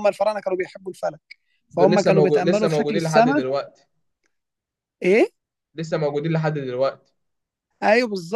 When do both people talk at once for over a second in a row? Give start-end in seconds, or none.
1.8-3.4